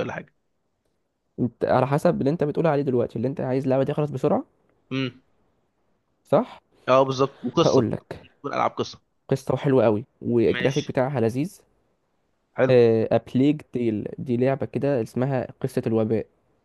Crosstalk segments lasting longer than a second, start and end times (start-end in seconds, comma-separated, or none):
none